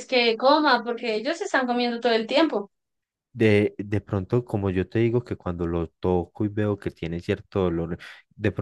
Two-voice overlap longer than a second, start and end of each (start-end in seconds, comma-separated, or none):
none